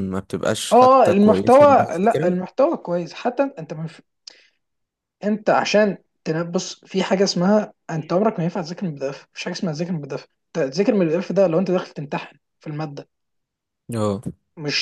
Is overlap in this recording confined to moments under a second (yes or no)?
no